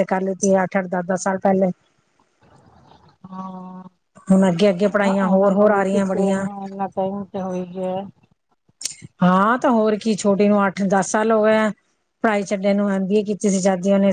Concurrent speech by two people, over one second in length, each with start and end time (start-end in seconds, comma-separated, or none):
4.8-6.5